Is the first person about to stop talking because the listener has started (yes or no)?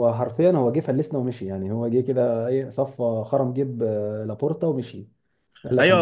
yes